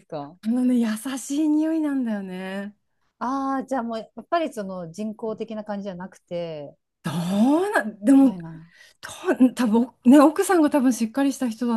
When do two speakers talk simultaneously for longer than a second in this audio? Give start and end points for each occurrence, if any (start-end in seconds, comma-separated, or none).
none